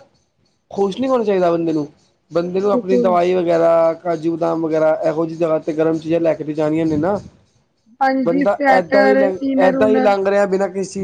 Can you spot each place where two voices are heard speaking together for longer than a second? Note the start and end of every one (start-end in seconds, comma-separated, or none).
8.3-10.1